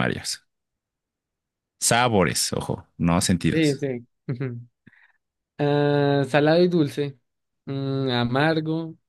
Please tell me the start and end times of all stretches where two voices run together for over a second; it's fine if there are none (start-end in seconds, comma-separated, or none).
none